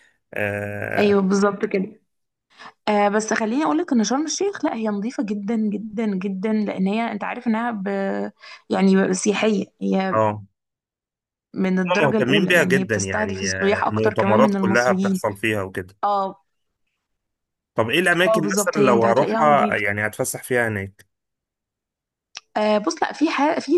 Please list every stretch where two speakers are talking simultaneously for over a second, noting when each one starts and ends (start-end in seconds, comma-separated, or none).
11.9-15.2, 18.2-19.8